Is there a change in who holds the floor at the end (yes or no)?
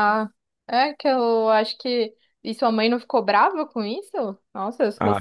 yes